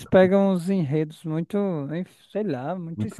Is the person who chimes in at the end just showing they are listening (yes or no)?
no